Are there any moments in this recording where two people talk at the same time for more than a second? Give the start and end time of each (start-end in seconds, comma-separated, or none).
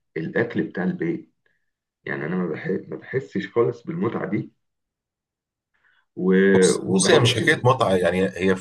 6.5-8.1